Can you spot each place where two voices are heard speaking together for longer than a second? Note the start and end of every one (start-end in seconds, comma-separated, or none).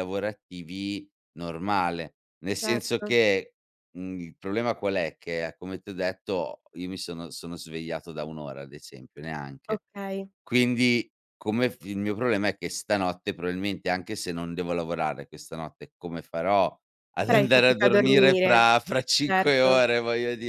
17.3-18.6